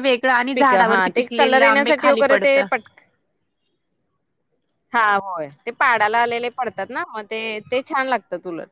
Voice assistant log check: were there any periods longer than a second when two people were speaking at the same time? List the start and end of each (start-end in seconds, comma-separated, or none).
0.6-2.6